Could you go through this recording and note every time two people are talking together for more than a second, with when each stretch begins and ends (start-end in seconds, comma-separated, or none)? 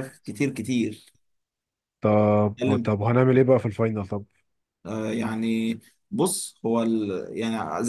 none